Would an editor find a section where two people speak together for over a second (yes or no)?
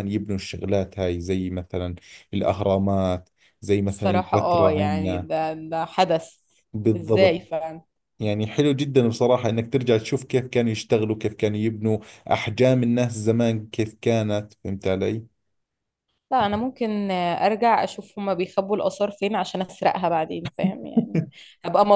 yes